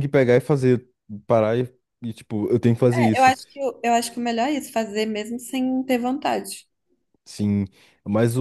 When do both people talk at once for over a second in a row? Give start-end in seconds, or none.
none